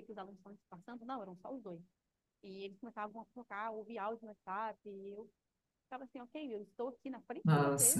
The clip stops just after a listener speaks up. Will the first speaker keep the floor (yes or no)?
yes